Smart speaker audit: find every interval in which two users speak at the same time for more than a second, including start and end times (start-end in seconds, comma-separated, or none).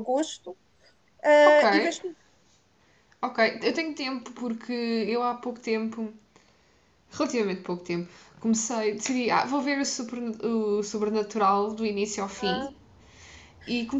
none